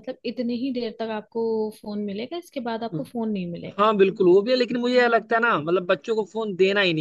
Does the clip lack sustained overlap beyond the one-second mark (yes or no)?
yes